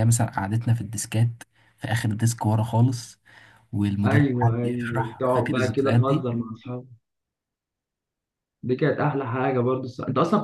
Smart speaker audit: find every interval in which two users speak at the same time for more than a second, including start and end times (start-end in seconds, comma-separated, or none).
4.0-6.3